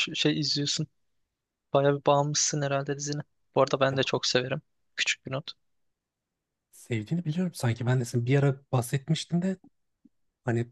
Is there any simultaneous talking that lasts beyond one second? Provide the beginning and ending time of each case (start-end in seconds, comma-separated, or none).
none